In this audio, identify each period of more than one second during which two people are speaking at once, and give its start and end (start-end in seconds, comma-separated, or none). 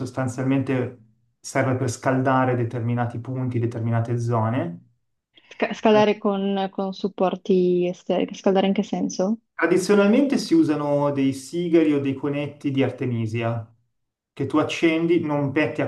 none